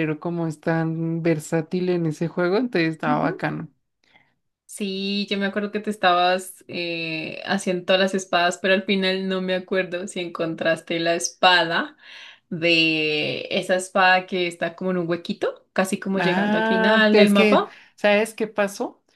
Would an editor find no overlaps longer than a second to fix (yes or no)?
no